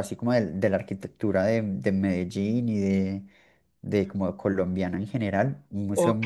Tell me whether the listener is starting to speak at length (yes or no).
yes